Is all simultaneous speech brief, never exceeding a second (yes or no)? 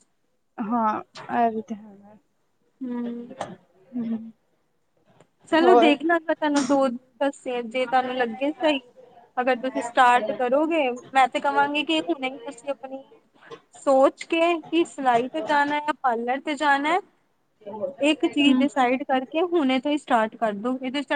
yes